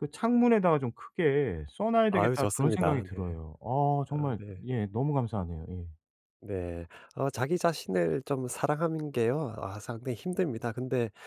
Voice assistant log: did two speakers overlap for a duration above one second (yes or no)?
yes